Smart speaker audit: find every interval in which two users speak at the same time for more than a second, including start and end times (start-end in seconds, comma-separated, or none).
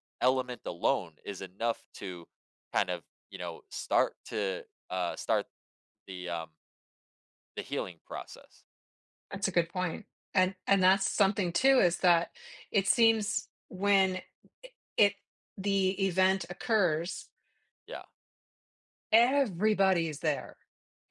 none